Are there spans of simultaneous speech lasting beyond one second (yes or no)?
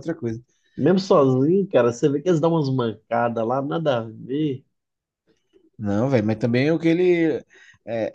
no